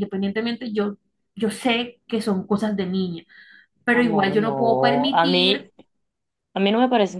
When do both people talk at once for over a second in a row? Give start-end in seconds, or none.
3.9-5.7